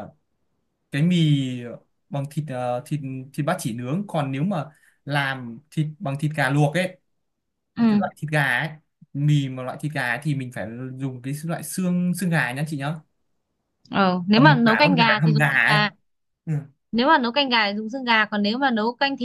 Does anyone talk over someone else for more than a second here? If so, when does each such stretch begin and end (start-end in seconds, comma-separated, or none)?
14.3-15.8